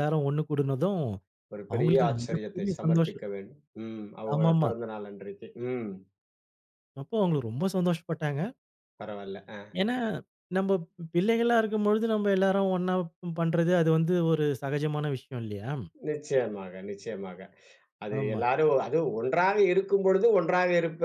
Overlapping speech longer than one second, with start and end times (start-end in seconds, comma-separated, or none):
1.7-3.2